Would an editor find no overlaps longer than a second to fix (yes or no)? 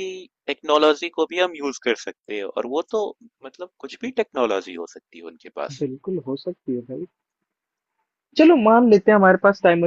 yes